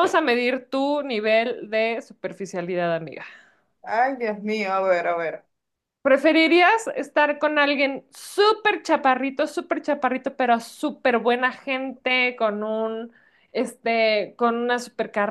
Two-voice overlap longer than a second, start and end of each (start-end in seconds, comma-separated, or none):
none